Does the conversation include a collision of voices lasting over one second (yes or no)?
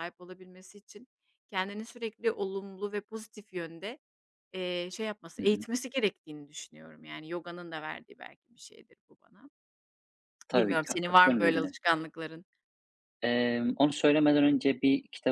yes